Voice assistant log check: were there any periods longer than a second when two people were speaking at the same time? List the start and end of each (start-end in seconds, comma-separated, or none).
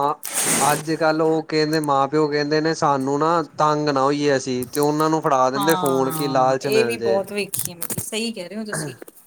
5.6-7.2